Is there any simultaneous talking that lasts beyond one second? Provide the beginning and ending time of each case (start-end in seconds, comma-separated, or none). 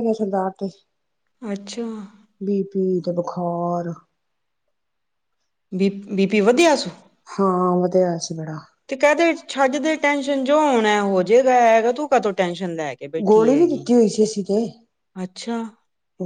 none